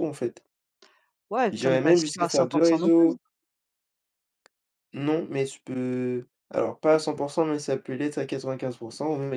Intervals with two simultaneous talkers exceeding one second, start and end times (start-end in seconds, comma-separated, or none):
1.5-3.2